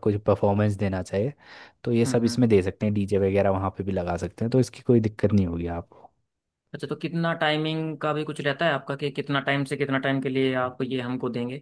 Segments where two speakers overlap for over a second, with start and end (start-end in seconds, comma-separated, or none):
none